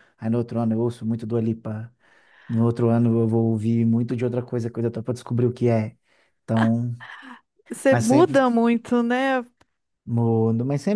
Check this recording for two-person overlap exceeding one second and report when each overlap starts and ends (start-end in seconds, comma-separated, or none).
none